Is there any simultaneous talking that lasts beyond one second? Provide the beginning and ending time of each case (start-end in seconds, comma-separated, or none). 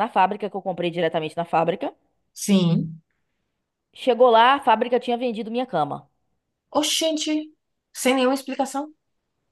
none